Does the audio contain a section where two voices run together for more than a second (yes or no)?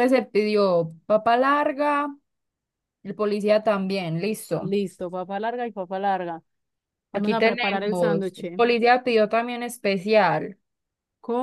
yes